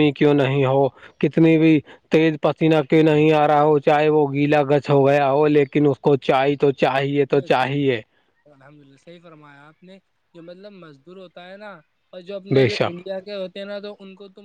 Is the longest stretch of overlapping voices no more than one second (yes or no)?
yes